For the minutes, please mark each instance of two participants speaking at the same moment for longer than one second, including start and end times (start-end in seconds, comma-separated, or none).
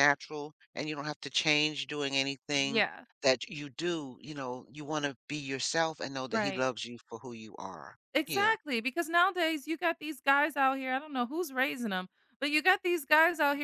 none